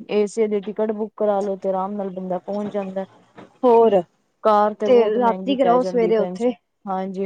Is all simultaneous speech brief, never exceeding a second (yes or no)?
no